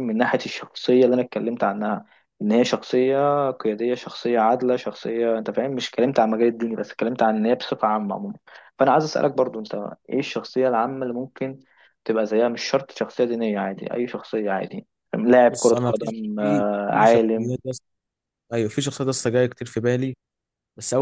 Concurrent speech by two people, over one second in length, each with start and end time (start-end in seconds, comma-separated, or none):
15.5-17.6